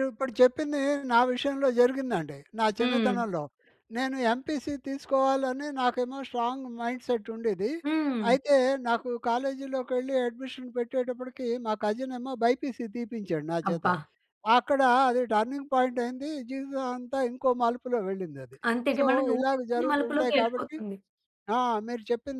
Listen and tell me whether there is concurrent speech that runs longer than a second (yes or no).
yes